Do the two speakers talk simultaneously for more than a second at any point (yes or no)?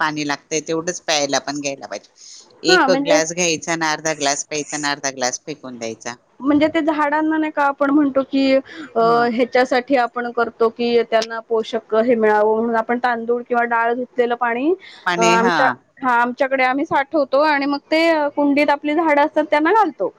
no